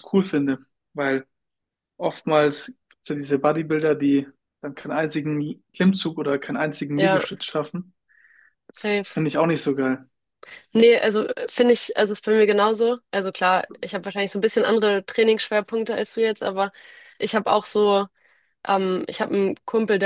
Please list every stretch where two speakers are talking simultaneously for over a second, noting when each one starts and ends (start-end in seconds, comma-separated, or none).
none